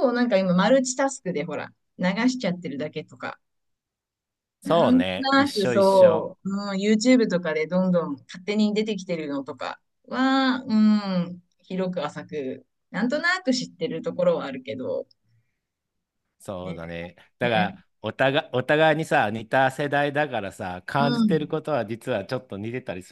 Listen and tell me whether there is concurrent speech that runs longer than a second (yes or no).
yes